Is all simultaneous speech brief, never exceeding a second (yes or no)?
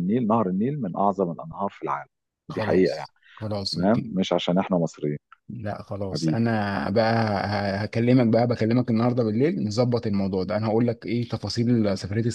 yes